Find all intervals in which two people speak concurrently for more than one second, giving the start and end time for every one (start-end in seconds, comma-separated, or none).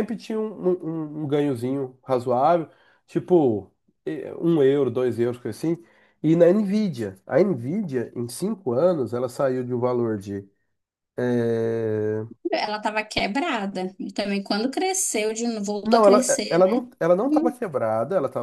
15.8-17.6